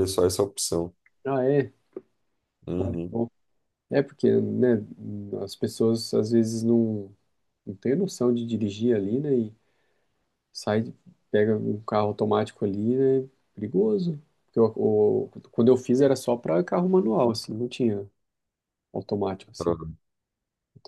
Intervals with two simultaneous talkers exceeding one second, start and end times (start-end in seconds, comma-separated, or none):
none